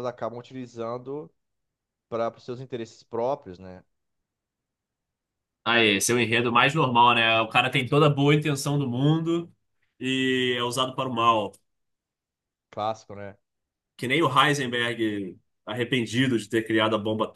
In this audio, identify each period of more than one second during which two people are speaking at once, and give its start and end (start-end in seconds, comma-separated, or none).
none